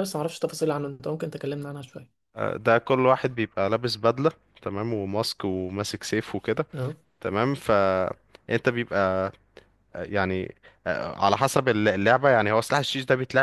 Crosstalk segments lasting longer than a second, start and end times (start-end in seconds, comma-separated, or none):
none